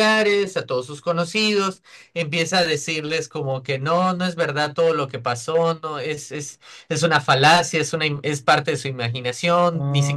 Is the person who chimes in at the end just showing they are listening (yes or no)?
yes